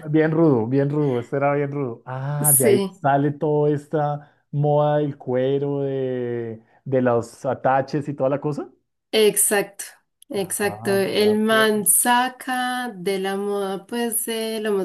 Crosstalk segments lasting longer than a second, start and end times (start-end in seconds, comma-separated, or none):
10.3-11.7